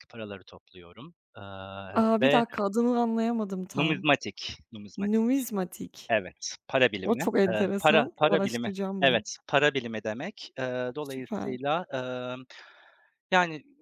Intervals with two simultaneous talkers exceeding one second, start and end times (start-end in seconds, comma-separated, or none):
7.0-9.2